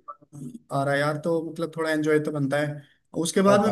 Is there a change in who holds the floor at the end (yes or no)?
no